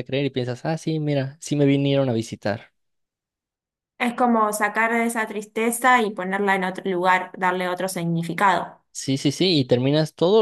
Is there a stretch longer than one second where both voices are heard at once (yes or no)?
no